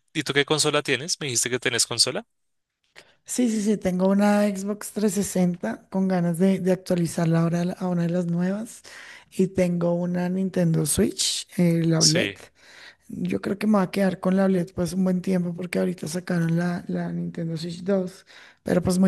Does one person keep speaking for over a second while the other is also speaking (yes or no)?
no